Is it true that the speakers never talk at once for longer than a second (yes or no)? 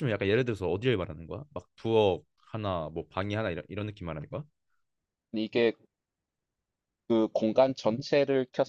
yes